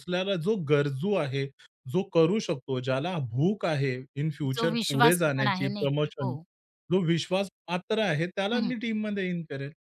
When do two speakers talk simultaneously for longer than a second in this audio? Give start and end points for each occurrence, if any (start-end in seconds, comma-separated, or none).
4.5-6.3